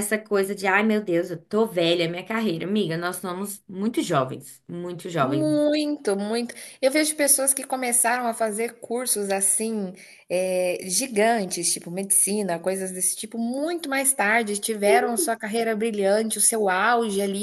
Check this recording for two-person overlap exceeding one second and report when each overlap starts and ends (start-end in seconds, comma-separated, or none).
none